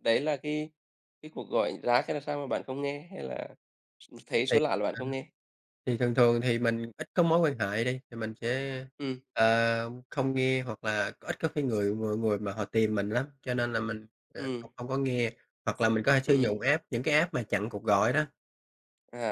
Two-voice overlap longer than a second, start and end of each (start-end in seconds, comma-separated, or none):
none